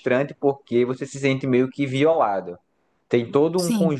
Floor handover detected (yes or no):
no